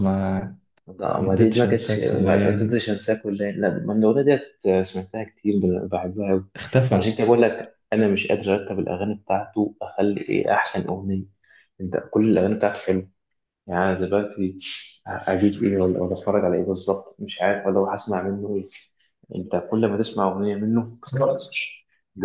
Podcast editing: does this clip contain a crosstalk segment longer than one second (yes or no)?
yes